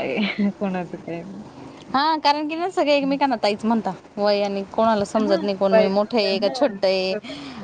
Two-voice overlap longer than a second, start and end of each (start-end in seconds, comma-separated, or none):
5.2-7.1